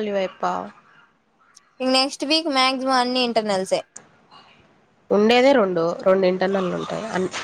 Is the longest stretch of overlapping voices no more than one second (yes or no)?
yes